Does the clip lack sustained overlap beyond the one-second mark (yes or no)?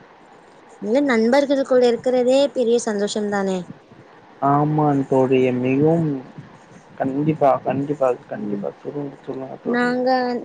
yes